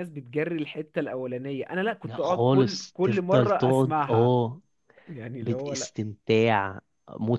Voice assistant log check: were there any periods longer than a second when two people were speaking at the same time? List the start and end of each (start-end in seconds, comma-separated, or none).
2.0-4.4